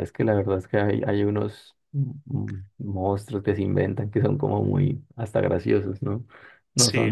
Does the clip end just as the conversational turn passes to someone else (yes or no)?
no